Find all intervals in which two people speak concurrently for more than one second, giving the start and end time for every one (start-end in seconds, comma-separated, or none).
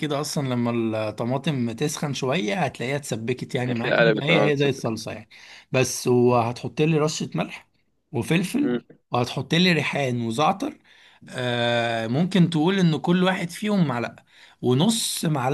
3.7-5.1